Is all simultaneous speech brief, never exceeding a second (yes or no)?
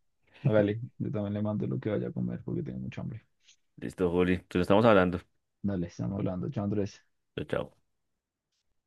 yes